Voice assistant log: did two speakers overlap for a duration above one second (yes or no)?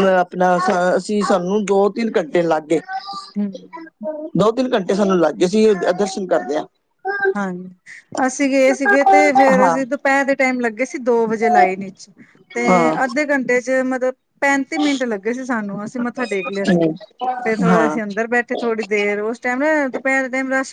no